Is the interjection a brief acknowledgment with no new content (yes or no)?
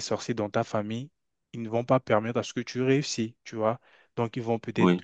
yes